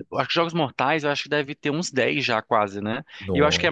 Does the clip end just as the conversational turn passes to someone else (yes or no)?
no